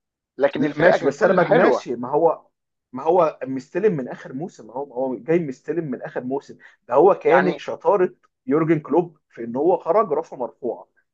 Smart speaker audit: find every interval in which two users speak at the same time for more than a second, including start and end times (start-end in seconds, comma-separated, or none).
0.6-1.9